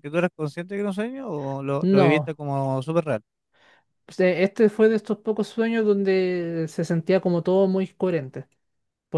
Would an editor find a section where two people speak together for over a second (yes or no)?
no